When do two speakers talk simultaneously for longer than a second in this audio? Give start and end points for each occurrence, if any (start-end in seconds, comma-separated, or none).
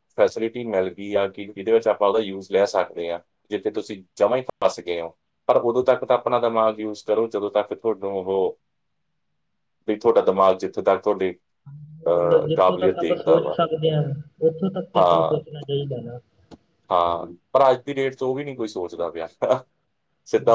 12.1-13.6